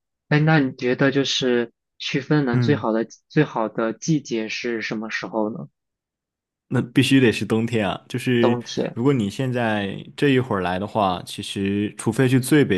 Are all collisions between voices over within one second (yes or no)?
yes